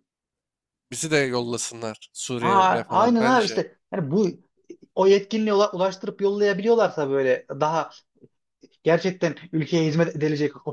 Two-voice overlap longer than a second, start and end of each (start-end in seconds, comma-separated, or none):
2.4-3.6